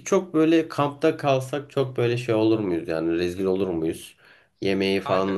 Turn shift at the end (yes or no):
yes